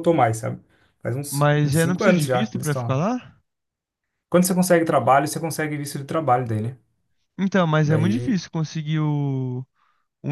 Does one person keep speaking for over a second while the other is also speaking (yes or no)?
yes